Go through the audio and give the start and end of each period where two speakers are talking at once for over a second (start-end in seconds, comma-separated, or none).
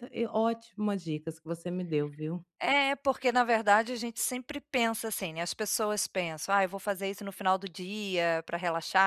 none